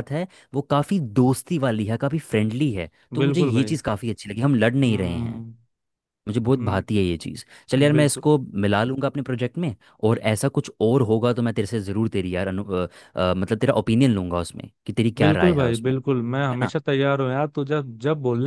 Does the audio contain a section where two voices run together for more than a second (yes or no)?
yes